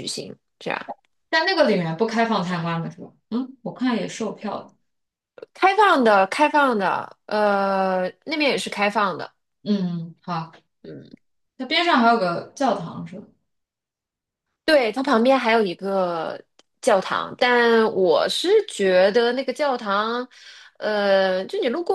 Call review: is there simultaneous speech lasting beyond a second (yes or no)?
no